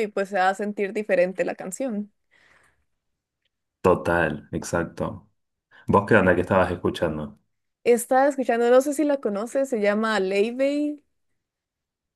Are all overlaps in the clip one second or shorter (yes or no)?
yes